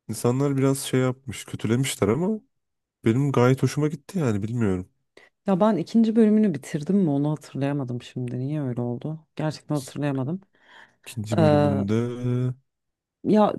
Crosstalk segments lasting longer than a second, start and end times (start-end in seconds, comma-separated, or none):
none